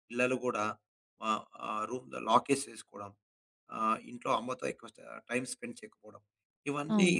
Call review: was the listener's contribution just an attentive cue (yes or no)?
no